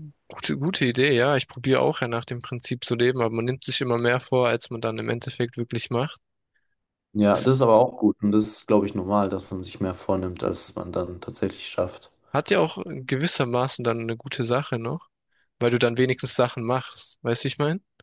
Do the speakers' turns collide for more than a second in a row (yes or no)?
no